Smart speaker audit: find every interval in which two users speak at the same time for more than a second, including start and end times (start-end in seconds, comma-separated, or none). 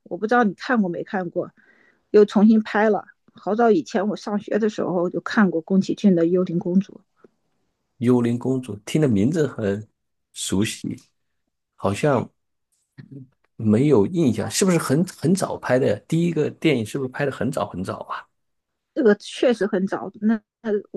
none